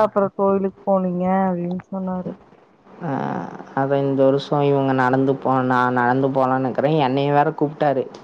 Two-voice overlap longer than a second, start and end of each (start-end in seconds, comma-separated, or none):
none